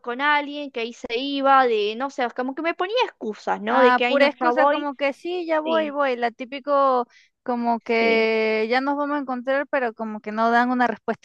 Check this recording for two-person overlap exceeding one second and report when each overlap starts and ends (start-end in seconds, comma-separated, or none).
3.7-4.9